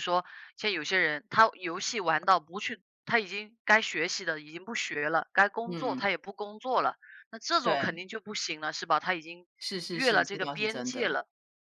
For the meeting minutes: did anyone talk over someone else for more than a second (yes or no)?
yes